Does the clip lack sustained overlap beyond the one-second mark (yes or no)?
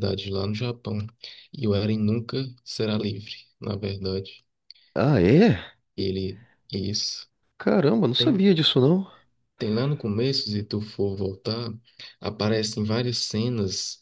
yes